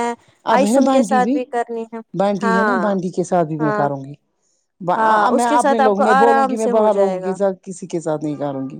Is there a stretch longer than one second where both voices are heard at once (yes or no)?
yes